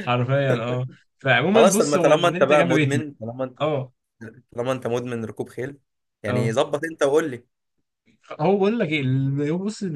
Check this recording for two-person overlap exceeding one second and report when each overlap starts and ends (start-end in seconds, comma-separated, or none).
1.5-3.1